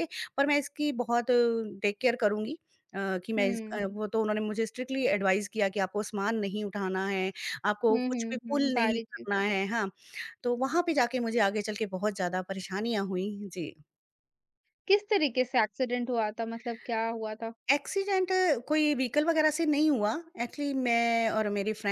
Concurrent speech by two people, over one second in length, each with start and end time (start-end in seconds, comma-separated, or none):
7.9-9.4